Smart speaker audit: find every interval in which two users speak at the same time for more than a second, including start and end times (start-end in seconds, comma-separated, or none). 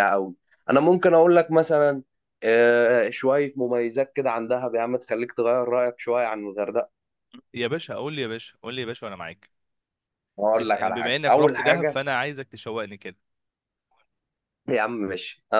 10.6-12.0